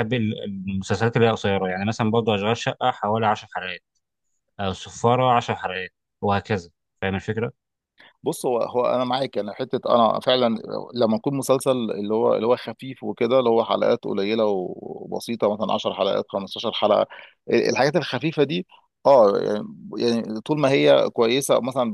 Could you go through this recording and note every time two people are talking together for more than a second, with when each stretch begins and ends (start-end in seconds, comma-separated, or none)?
none